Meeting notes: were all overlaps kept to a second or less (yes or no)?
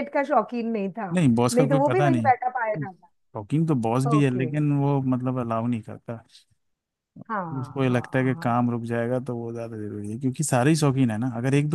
no